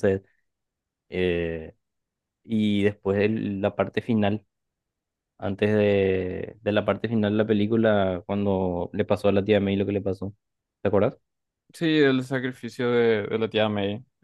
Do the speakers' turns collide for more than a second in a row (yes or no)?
no